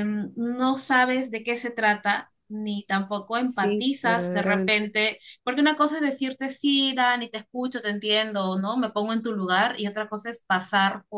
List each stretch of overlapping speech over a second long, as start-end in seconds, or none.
3.4-4.9